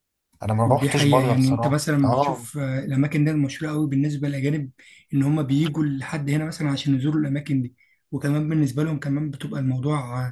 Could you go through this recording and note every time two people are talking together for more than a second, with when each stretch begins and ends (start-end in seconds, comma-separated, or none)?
0.7-2.5